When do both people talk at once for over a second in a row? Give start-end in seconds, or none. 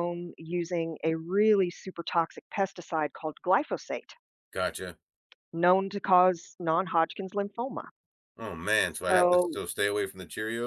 none